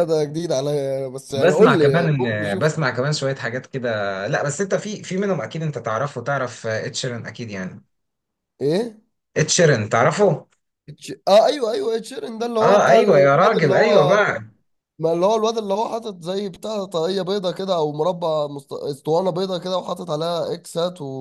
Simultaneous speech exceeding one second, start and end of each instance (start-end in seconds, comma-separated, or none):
1.3-2.7, 12.6-14.2